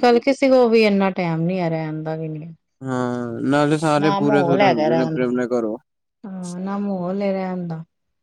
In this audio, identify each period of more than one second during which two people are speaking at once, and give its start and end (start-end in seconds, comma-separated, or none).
4.0-5.3